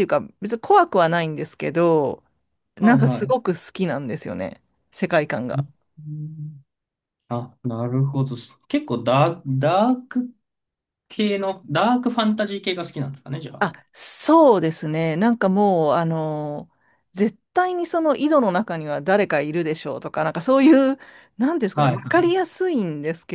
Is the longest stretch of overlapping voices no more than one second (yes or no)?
yes